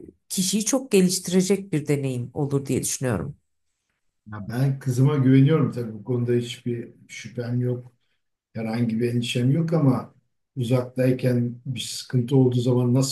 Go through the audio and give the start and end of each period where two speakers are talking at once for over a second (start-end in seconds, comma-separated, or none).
none